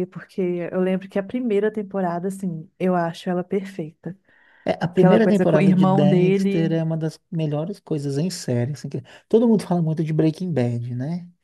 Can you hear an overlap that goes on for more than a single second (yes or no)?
yes